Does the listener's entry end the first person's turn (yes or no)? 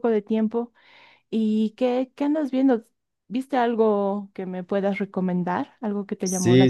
yes